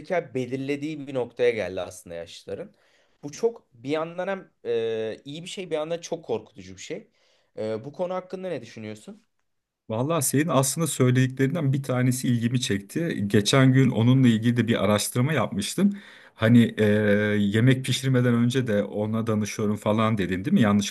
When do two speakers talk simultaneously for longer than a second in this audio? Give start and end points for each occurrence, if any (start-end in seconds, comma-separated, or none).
none